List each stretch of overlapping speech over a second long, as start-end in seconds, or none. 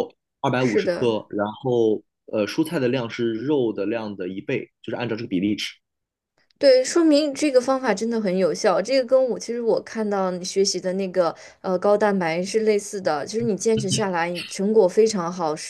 none